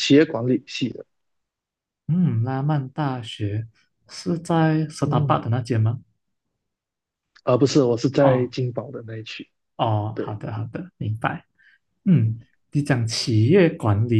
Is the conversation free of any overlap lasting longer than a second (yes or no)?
yes